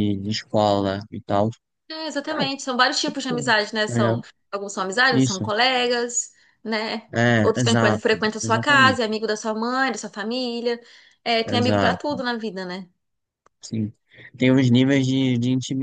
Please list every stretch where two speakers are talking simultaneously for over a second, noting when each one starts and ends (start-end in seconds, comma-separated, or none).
7.1-9.1